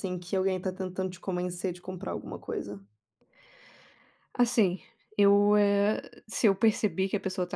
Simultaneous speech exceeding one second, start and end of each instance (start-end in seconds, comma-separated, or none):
none